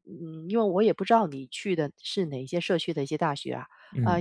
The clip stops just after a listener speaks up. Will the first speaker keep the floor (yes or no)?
yes